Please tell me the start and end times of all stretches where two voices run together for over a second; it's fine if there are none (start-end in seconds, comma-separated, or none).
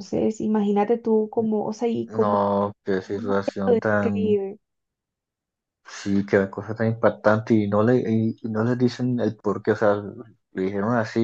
3.1-4.4